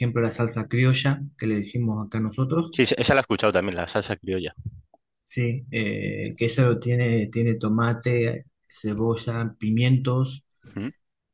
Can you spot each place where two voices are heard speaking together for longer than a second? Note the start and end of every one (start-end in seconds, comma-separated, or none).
none